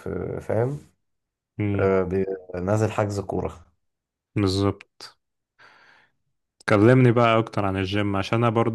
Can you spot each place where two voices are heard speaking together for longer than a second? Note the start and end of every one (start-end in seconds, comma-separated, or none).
none